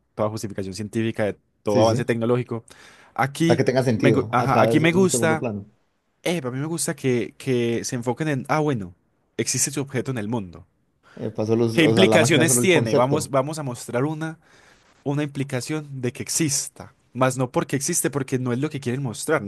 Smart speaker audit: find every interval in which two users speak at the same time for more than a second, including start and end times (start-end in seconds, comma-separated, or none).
3.4-5.5, 11.7-13.3